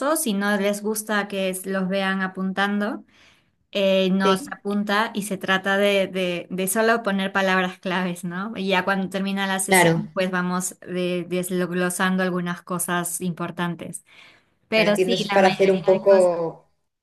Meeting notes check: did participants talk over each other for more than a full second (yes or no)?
yes